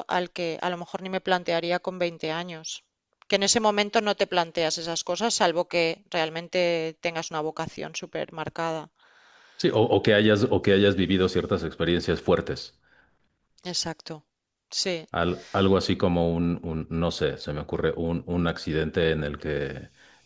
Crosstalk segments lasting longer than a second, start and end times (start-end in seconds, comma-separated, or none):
none